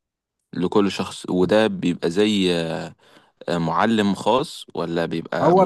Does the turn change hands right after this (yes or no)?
yes